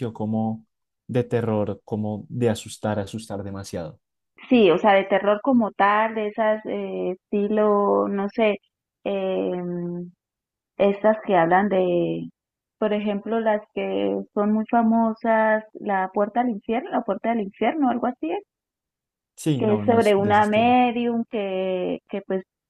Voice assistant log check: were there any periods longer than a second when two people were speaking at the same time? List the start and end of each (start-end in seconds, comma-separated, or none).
19.6-20.8